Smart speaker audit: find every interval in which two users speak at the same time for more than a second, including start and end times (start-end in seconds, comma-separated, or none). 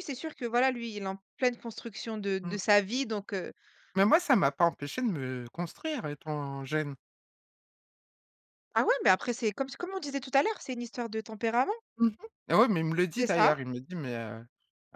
none